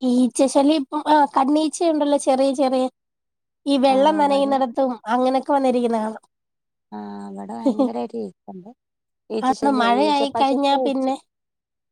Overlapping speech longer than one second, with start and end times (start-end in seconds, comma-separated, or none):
9.5-11.1